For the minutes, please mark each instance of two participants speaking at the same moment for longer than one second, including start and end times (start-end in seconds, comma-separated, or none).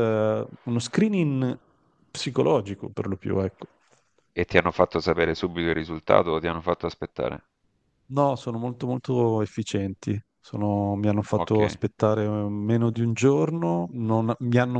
none